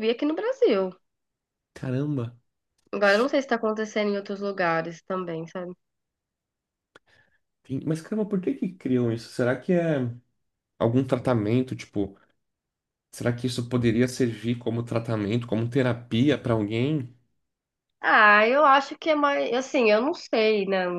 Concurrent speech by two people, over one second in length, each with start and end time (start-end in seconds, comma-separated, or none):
none